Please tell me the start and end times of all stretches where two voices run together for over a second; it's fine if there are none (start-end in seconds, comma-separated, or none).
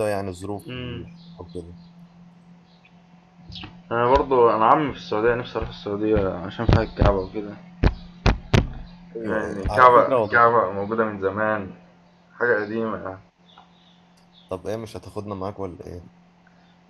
9.2-10.5